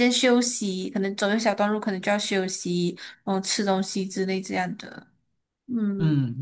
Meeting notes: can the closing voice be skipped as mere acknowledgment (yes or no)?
no